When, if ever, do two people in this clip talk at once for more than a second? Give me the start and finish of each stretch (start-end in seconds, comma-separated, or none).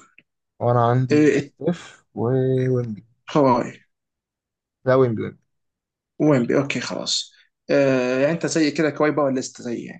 none